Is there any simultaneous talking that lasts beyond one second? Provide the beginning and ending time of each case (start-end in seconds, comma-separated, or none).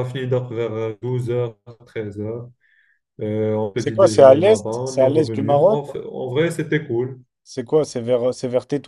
3.8-5.8